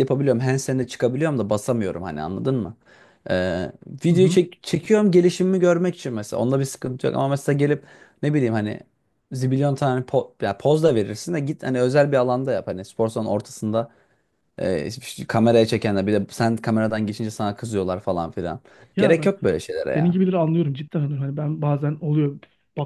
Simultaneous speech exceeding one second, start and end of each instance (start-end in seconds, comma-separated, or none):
none